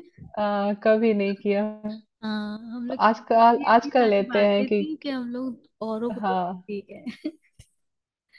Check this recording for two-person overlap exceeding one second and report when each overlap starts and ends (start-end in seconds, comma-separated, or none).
2.9-4.8